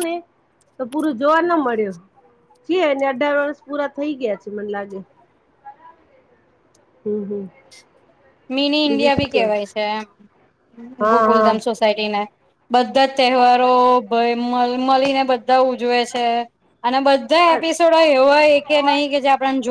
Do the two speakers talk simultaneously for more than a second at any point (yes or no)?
no